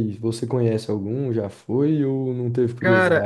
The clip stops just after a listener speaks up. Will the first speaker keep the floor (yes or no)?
no